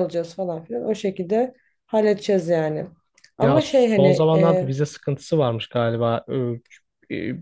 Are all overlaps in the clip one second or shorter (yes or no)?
no